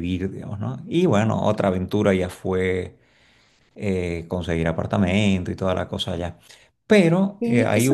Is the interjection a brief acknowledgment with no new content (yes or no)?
no